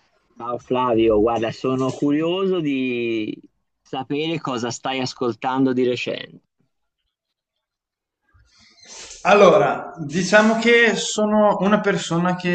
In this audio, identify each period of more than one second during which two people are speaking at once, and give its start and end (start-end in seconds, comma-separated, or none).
none